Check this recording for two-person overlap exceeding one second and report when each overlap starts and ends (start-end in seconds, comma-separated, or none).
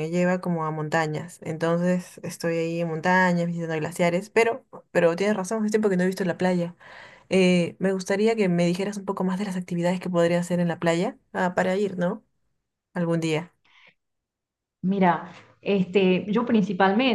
none